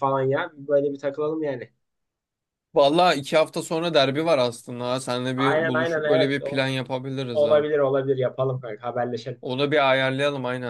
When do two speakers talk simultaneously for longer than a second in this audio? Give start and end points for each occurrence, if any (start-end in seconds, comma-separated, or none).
5.3-6.6